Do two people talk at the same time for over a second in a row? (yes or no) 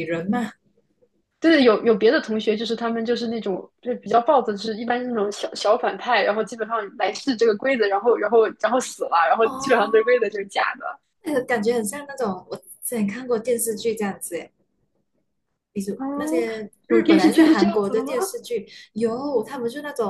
yes